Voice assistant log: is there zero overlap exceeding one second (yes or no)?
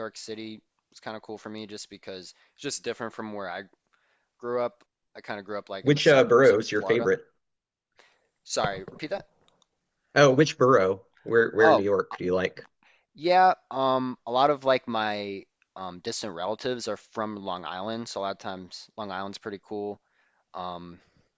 no